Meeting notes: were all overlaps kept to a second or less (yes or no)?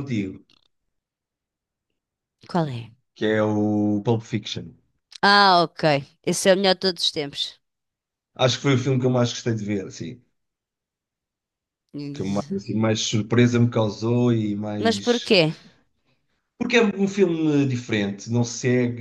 yes